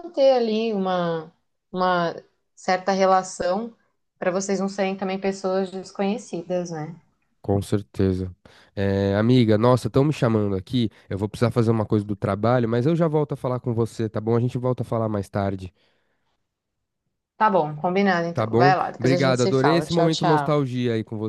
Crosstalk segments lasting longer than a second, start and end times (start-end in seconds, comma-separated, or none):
18.3-20.6